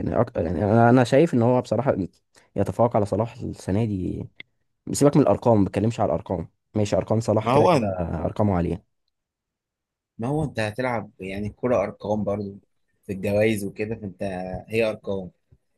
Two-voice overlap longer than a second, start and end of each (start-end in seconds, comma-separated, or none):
none